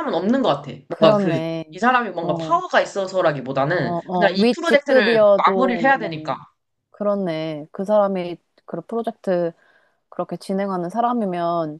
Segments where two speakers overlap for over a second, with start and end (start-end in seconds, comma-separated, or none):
3.7-6.4